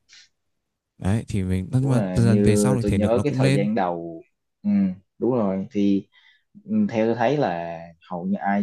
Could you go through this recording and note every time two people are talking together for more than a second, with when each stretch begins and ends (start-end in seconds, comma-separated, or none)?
1.8-3.7